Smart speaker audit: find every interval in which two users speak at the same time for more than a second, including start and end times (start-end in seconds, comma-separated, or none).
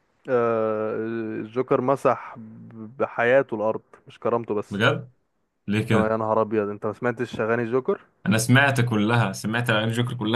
none